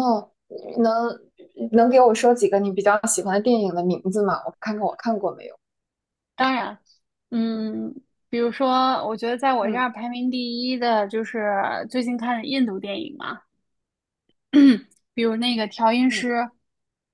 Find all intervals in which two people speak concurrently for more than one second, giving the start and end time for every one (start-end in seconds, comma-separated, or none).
none